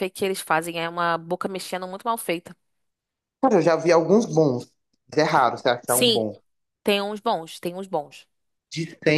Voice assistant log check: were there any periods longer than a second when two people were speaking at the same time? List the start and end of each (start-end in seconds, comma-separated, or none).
none